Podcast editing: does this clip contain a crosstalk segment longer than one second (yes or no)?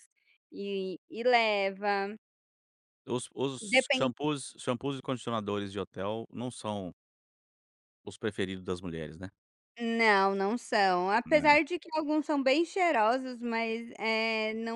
no